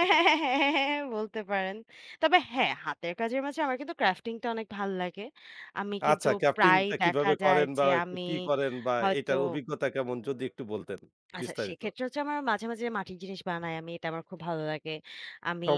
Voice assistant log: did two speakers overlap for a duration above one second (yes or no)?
yes